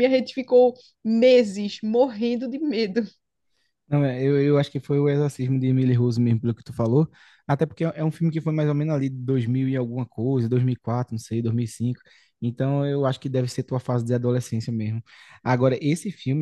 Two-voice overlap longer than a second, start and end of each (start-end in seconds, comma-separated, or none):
none